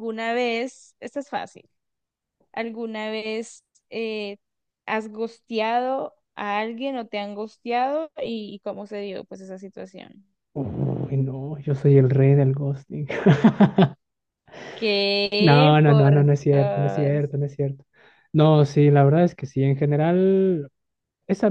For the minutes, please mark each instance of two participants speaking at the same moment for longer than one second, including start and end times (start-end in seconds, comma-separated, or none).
15.4-17.2